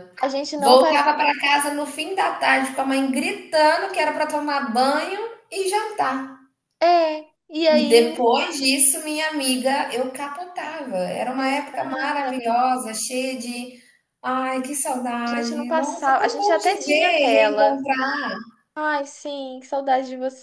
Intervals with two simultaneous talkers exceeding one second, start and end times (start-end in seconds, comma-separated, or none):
11.4-12.8, 15.3-17.8